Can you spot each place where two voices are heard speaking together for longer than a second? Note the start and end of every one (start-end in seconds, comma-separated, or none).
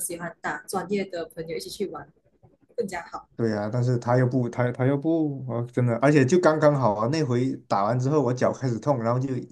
none